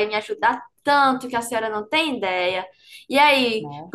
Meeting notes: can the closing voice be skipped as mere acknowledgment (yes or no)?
yes